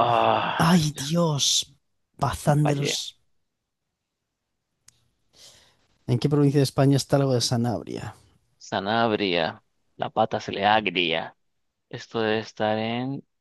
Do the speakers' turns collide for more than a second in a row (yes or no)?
no